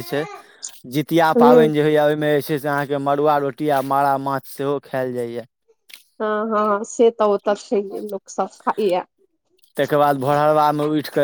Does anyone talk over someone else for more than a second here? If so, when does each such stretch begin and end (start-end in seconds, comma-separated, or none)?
none